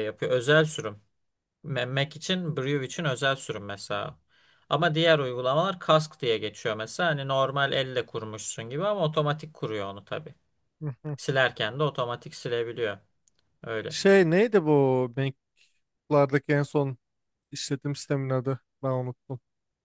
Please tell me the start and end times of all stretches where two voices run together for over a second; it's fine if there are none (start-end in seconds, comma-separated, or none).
none